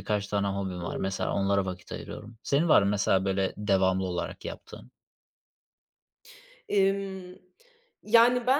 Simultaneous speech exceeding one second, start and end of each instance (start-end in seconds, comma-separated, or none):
none